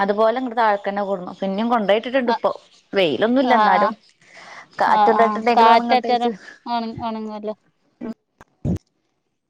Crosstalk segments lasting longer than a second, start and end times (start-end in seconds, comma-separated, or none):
5.0-6.3